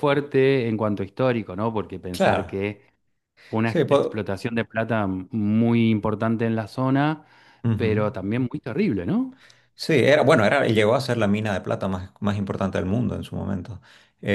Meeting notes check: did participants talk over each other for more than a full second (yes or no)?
no